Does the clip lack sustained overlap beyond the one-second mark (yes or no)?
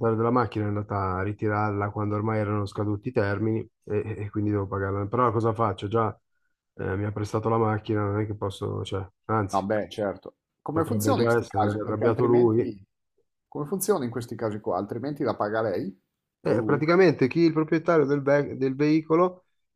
no